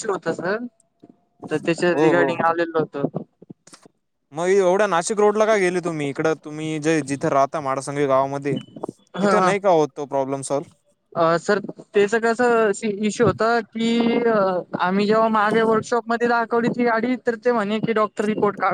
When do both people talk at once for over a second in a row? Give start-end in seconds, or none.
none